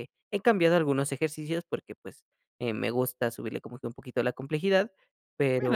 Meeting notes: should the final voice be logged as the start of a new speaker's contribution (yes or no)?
yes